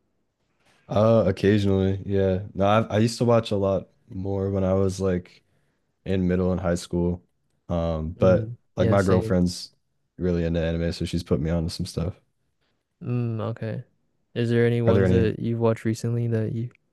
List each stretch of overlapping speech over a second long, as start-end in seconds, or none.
8.2-9.4